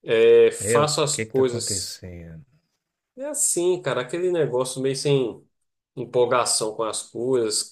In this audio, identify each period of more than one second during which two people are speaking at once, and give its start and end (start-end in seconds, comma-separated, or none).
0.6-2.0